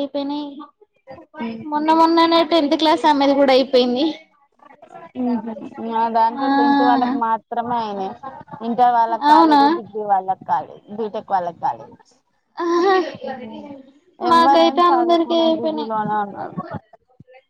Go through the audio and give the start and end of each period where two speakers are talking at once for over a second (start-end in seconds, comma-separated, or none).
14.3-15.9